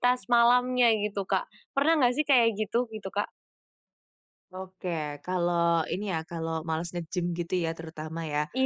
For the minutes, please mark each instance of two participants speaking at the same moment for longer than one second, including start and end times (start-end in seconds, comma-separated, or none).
none